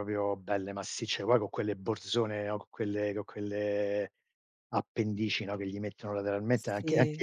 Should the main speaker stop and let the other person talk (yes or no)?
yes